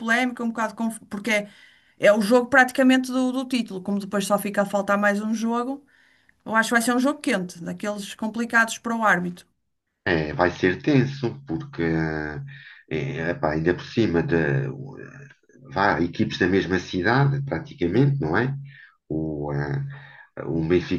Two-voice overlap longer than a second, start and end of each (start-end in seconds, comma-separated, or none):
none